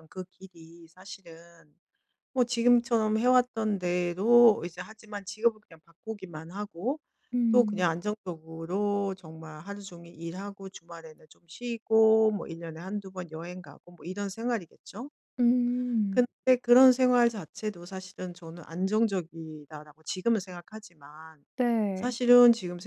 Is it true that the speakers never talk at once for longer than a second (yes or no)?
yes